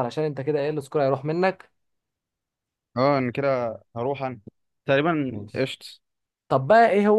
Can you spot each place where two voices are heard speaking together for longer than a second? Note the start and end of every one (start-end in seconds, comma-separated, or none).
none